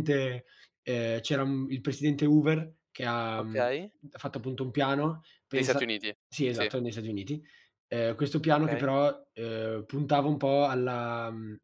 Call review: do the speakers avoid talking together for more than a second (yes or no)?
yes